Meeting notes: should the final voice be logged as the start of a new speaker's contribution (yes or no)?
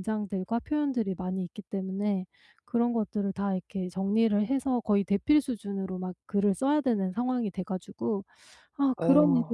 no